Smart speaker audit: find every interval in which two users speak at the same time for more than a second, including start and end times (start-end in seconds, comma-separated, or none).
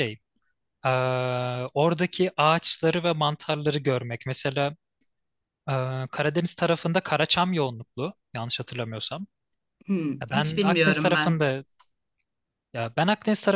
10.2-11.4